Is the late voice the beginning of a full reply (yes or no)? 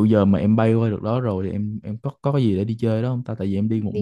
yes